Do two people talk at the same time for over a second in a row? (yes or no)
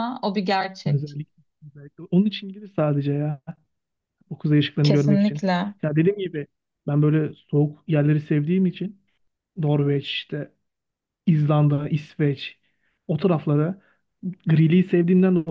no